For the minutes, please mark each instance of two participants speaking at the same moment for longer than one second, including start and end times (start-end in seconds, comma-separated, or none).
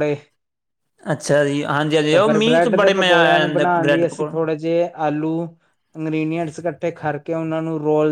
2.1-4.4